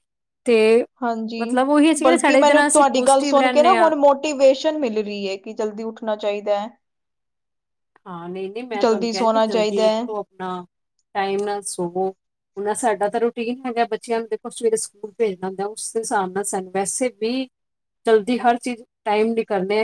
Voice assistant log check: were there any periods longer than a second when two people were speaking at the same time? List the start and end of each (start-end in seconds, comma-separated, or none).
2.0-3.9, 8.8-10.0